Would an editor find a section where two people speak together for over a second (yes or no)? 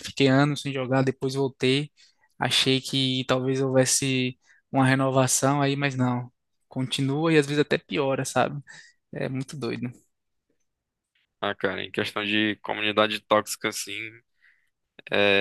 no